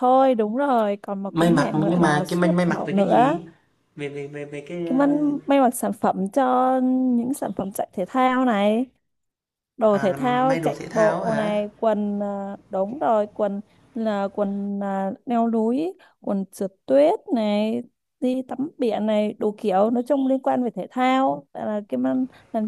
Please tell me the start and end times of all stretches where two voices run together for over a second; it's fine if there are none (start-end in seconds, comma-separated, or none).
1.3-3.4, 9.9-11.5